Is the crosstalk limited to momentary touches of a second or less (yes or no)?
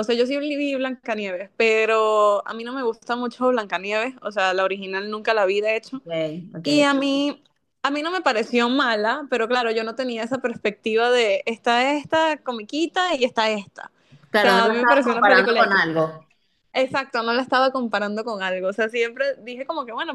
no